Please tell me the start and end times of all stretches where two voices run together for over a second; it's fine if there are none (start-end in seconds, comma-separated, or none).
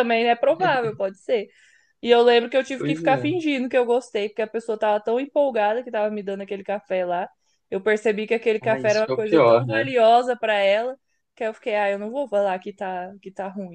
8.6-9.8